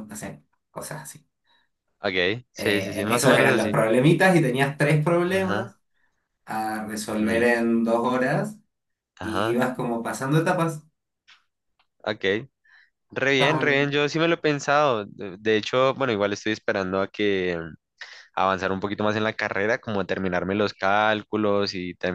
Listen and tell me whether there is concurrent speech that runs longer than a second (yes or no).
yes